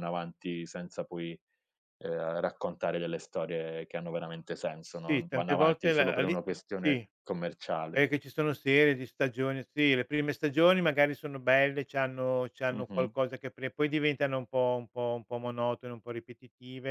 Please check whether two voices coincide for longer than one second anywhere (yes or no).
yes